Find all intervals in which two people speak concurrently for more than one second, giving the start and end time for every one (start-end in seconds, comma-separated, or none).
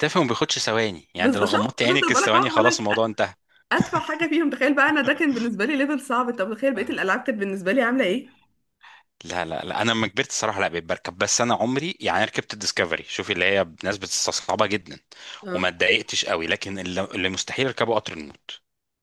1.2-2.8